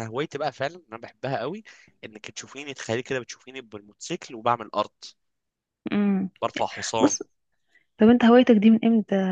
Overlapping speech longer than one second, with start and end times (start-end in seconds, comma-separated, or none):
none